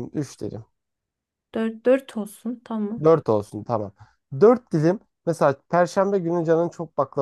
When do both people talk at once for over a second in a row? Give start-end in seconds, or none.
none